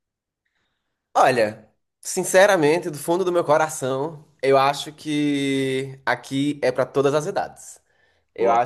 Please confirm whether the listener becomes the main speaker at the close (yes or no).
no